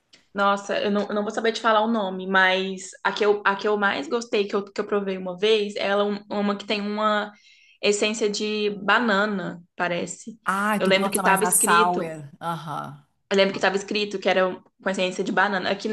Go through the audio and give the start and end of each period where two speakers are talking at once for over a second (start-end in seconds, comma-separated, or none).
10.8-12.1